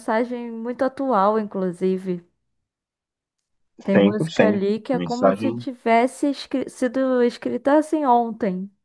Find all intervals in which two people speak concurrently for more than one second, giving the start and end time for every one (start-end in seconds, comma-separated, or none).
3.9-5.7